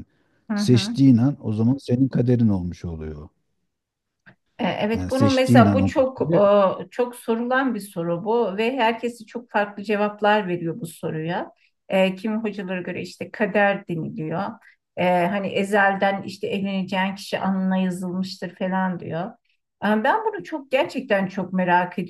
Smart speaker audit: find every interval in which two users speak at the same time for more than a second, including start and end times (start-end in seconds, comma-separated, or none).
5.0-6.3